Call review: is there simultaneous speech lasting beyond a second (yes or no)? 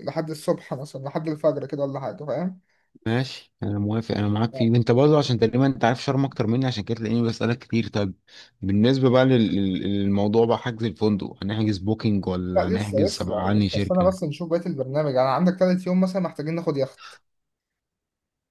yes